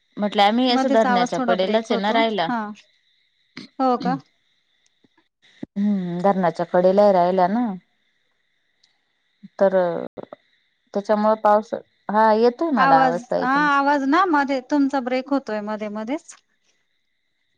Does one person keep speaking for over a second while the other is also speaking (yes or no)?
yes